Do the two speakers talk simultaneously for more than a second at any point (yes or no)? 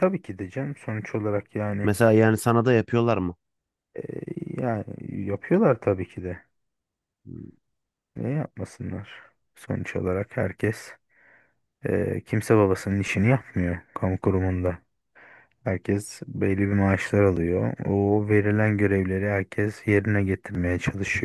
no